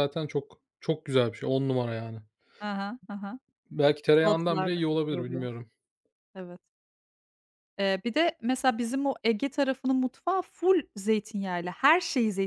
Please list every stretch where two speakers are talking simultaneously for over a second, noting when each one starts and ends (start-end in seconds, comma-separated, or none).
4.1-5.5